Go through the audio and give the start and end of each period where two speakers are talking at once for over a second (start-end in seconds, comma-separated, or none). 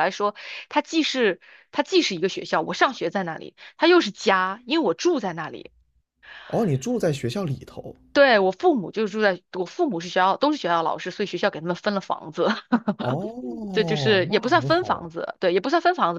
13.7-15.1